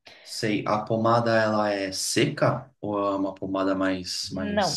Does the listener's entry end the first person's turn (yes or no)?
yes